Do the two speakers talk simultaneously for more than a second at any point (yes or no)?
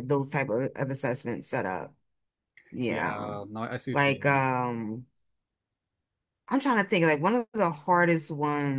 no